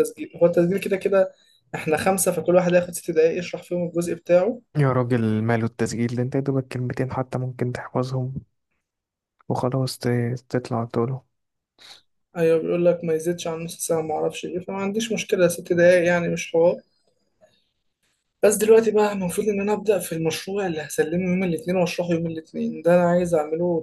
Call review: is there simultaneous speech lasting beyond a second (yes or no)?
no